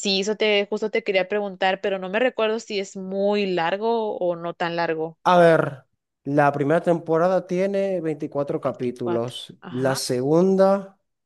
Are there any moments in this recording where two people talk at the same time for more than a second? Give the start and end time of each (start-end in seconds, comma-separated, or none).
8.6-10.0